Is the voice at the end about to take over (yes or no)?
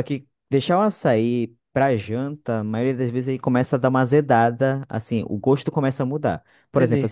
no